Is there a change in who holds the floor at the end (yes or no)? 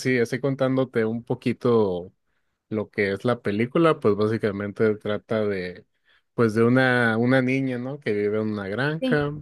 no